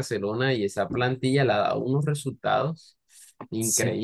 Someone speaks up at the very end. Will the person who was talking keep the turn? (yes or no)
no